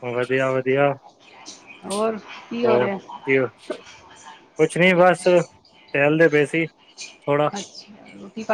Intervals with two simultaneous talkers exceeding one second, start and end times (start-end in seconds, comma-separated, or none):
none